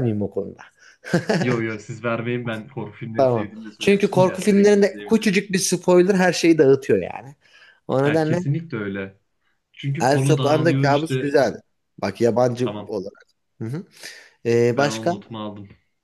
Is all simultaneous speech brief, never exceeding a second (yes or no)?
no